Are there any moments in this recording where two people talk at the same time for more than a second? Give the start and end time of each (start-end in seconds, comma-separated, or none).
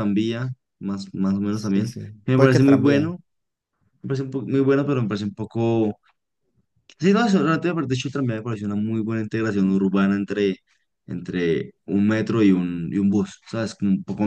1.5-3.1